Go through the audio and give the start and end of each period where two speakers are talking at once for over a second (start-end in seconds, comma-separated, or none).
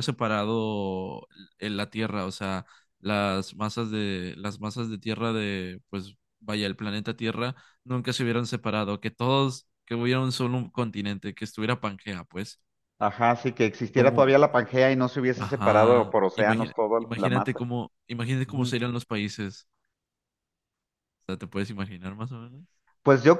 15.4-17.6